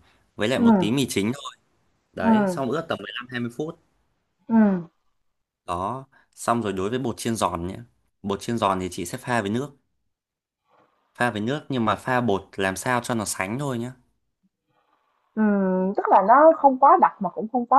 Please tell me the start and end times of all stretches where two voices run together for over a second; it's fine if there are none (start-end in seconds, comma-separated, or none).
none